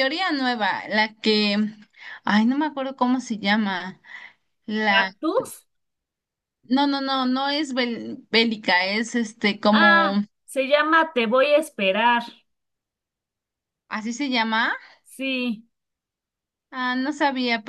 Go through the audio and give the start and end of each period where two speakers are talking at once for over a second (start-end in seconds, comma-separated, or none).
none